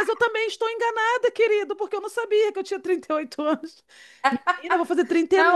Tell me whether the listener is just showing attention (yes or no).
yes